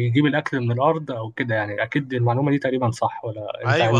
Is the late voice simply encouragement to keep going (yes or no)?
no